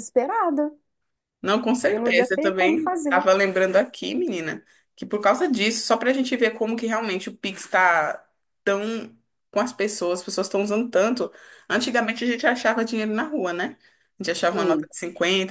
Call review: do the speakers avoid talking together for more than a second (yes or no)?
no